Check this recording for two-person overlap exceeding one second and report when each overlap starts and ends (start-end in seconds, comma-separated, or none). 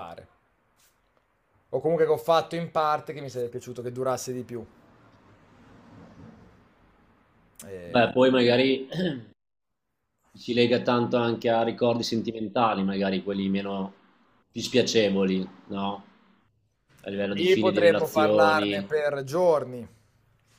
17.3-18.9